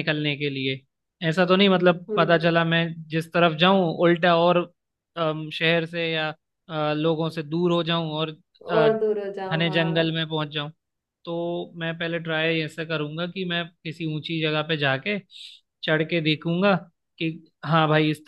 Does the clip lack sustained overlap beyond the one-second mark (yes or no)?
no